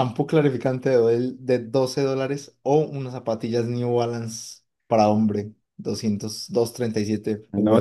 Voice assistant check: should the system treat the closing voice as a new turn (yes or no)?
yes